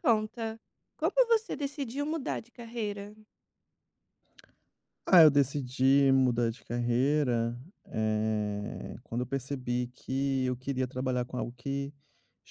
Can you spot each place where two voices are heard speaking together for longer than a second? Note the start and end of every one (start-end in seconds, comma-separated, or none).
none